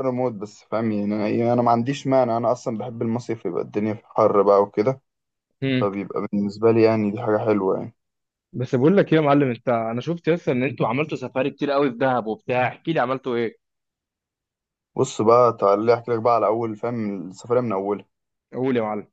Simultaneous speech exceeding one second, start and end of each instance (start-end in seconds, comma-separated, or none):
none